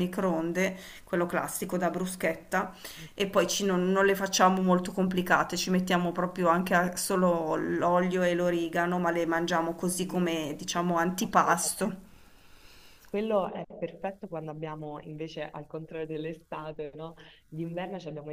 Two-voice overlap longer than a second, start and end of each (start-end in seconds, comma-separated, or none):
10.0-12.0